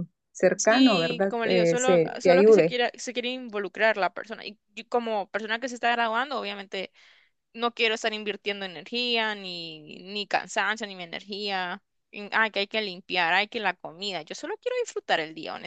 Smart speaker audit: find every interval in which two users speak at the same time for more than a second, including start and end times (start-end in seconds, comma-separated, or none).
0.6-2.8